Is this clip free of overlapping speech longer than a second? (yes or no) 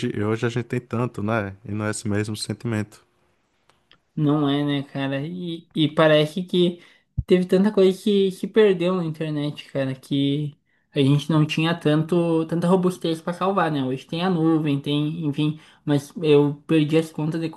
yes